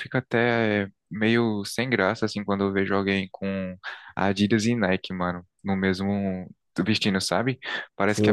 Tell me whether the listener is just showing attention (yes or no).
no